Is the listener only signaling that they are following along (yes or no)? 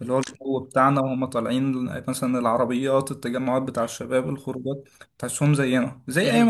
yes